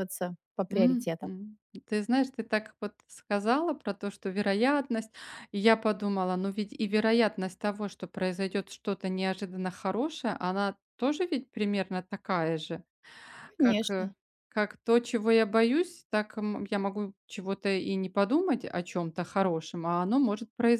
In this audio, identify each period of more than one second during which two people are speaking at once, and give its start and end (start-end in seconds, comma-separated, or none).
none